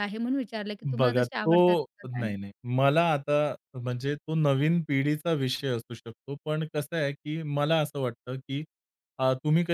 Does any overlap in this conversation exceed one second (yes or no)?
yes